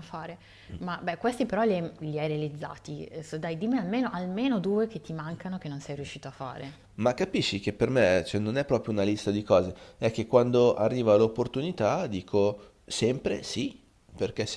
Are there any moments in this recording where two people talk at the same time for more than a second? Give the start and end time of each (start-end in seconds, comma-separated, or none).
none